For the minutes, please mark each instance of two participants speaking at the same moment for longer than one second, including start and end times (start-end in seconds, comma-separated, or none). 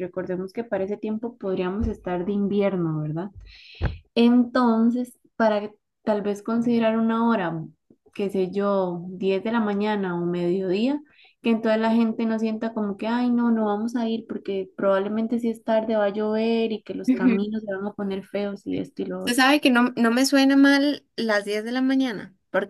none